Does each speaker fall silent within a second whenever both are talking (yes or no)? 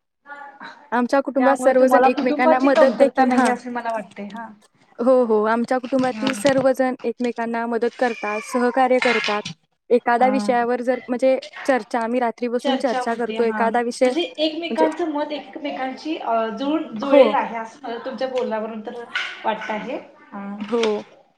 no